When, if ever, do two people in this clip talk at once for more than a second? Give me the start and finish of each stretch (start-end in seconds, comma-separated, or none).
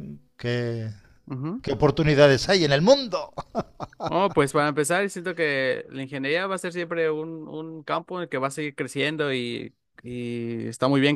none